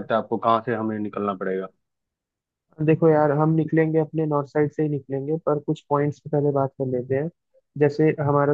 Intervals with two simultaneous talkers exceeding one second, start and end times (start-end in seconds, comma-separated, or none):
none